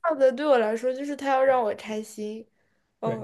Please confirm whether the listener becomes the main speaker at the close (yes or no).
yes